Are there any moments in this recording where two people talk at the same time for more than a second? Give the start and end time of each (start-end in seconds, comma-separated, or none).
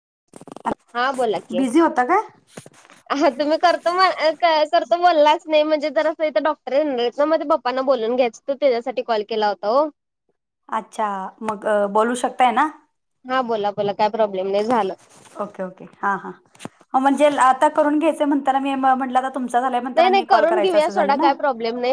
none